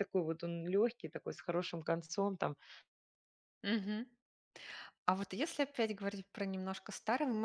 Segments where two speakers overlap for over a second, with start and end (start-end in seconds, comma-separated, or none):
none